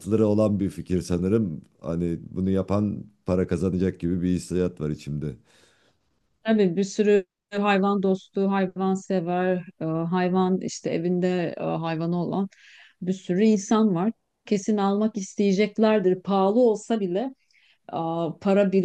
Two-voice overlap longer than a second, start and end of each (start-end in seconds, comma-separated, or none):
none